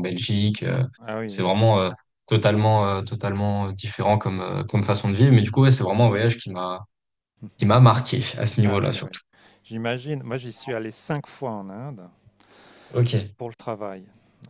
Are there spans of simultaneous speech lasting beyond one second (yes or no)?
no